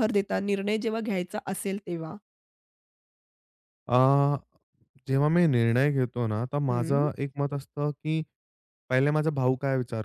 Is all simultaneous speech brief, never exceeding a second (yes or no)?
yes